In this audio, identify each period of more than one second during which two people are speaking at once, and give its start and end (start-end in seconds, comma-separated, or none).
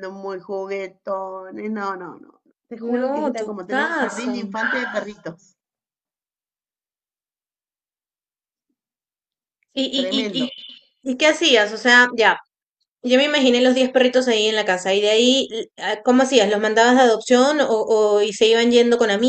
2.9-4.3